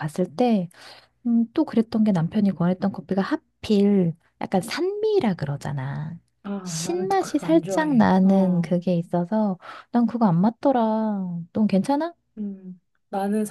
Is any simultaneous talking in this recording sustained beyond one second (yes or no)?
yes